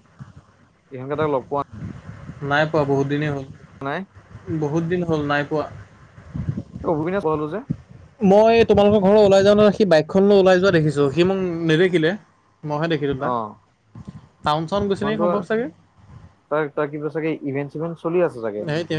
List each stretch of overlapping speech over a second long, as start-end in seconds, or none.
none